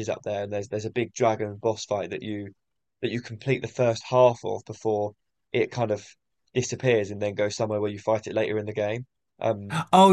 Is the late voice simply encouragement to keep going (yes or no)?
no